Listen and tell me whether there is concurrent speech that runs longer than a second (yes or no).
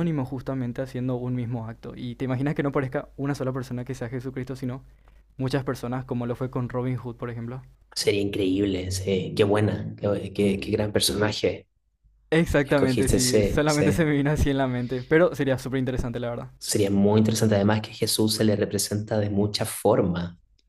yes